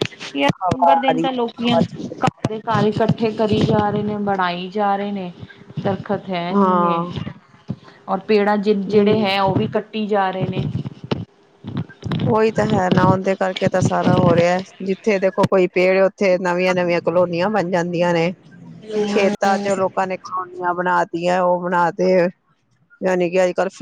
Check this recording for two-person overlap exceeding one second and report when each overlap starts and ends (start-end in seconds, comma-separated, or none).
0.7-2.2